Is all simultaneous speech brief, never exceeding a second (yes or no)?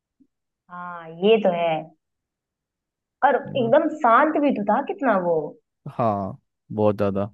yes